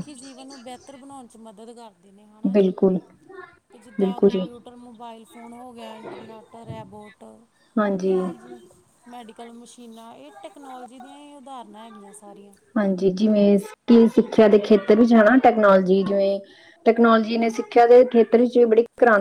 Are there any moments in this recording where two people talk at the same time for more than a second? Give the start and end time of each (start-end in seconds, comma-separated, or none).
none